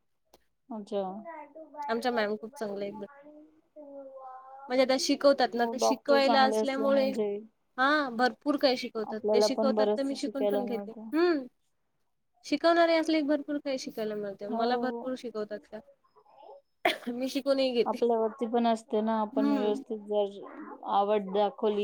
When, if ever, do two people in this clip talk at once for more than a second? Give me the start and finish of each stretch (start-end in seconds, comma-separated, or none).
5.6-7.1, 9.1-11.1